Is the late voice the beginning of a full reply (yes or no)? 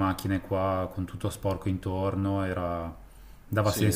yes